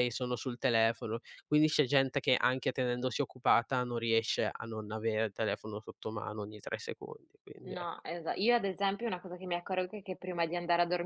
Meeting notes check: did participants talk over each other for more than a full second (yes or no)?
no